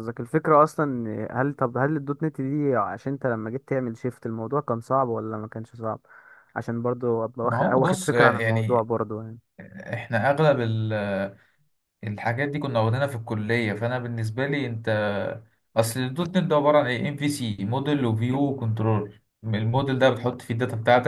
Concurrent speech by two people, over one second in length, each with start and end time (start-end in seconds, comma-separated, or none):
7.4-8.9